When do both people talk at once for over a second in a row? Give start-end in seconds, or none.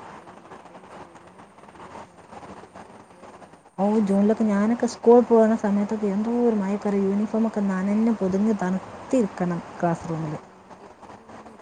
none